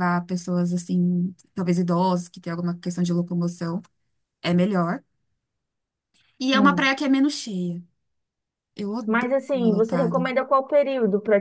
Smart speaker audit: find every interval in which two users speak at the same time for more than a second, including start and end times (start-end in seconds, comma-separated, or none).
9.1-10.4